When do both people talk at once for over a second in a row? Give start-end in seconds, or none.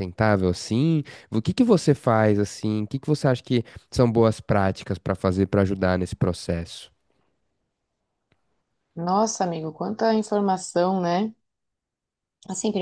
none